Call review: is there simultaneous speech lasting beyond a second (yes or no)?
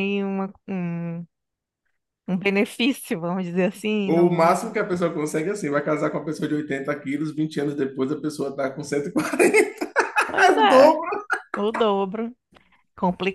no